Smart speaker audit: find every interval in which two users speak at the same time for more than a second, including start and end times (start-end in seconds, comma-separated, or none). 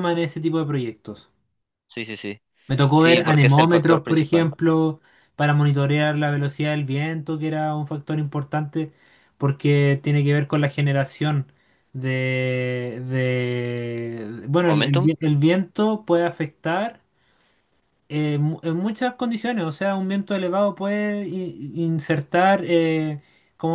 2.9-4.5